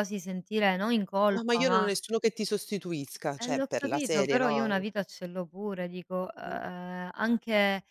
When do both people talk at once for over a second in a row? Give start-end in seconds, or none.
3.4-4.8